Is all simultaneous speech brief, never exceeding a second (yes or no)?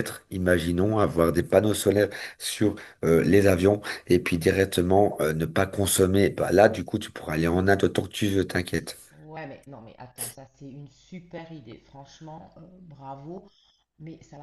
yes